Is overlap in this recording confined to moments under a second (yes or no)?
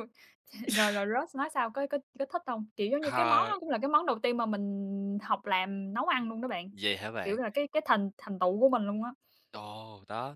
yes